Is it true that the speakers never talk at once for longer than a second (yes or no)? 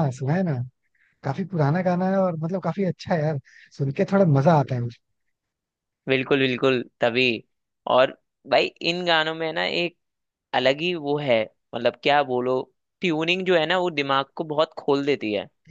yes